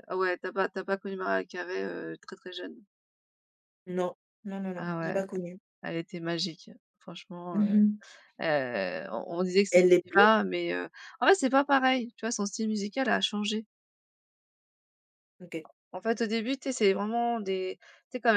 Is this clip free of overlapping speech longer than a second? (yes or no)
yes